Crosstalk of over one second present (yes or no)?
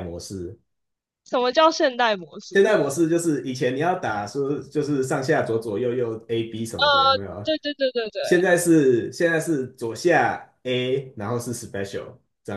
no